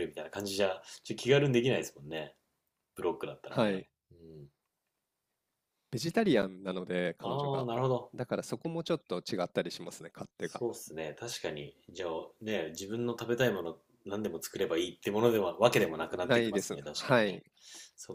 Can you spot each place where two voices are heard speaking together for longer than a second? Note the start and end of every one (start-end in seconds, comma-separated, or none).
16.2-17.4